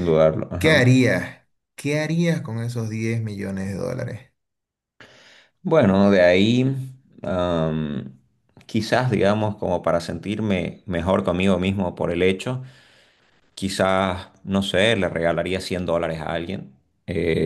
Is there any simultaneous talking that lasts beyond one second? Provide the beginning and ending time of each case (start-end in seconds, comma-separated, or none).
none